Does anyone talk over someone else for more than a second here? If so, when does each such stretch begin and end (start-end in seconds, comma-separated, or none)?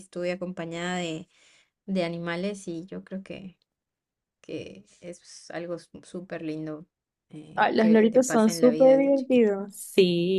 7.5-9.5